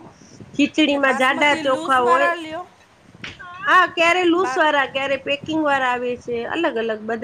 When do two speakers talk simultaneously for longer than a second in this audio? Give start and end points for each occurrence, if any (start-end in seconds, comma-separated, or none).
0.8-2.3